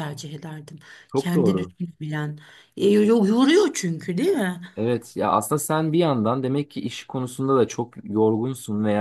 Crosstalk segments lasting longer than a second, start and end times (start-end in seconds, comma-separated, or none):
none